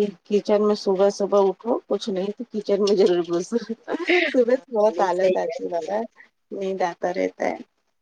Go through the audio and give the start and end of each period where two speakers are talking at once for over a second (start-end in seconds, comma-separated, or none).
4.3-6.0